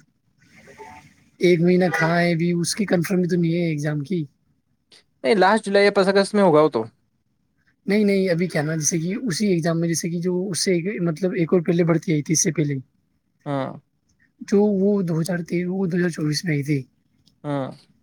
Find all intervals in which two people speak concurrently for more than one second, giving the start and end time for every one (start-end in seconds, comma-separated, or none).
none